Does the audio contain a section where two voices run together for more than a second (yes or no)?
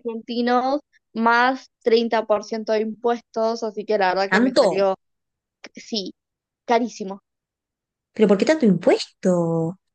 no